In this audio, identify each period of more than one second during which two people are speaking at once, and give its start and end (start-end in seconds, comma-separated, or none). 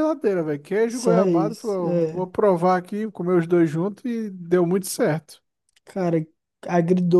0.9-2.3